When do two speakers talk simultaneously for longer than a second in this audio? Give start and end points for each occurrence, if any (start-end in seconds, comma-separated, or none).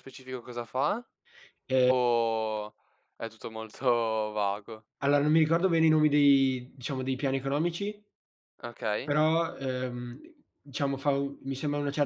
none